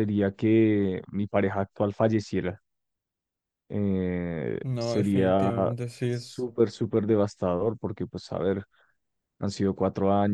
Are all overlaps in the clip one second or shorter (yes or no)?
no